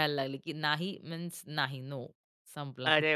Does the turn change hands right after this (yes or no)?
yes